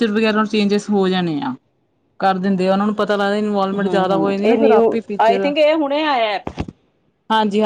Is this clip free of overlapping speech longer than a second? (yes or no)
no